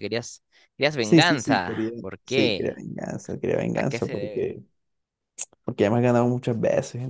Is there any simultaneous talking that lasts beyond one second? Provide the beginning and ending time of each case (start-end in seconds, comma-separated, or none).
1.0-2.8